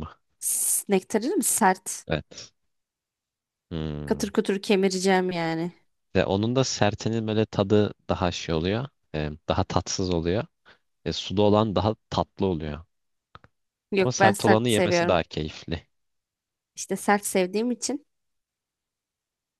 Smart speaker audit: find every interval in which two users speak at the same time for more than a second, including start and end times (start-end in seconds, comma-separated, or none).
14.0-15.2